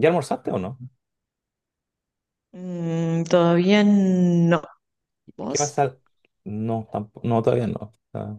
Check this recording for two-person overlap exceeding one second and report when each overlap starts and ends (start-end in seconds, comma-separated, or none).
none